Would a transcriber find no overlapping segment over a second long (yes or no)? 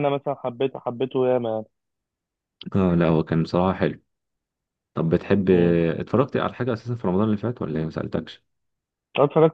yes